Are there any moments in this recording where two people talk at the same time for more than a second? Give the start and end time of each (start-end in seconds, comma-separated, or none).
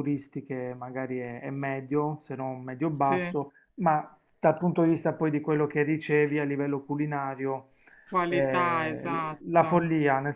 8.3-9.7